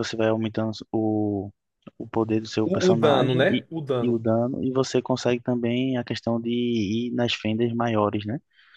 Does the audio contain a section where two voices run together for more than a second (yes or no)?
yes